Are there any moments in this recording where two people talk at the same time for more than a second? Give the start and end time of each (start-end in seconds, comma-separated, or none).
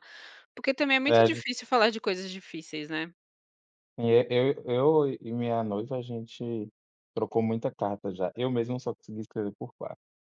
none